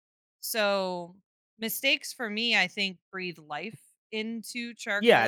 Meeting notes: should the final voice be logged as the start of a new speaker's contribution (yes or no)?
yes